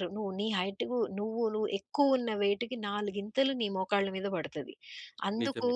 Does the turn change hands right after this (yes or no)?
no